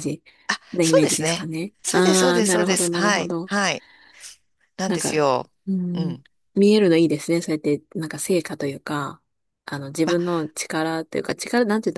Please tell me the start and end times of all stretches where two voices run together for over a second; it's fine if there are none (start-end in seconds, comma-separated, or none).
0.8-3.5